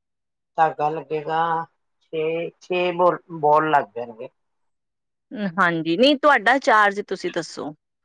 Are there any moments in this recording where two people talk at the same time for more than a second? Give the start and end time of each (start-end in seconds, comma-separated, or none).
none